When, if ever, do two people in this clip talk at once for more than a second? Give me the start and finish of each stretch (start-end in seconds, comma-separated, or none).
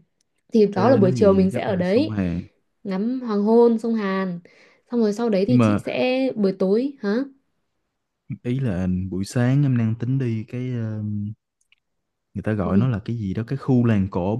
0.8-2.2